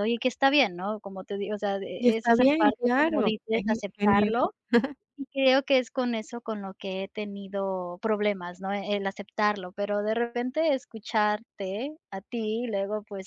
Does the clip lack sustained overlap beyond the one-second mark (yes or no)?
no